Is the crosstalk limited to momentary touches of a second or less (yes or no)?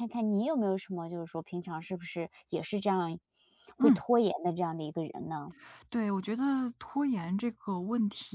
yes